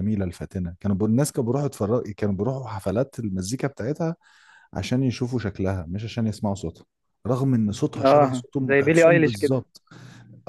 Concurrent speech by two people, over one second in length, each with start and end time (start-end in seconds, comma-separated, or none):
8.1-9.6